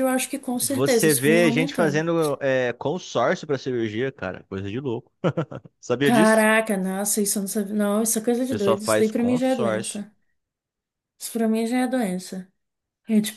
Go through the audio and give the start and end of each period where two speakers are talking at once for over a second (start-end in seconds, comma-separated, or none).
0.6-2.0, 8.5-10.0